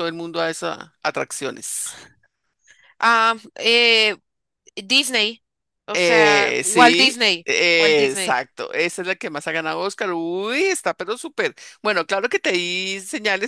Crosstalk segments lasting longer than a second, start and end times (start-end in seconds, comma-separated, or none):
5.9-8.4